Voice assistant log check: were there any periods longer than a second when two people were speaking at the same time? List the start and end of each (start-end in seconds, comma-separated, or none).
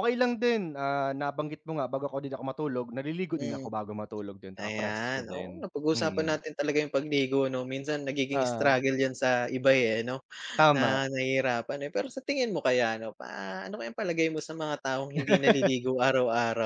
4.6-6.4